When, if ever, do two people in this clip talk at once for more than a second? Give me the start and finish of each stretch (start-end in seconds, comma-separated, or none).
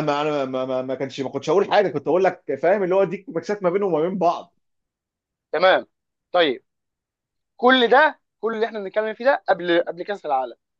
none